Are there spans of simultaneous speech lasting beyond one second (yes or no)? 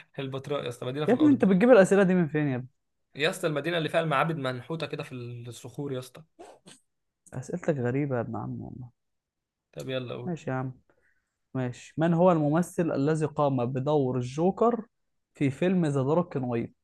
no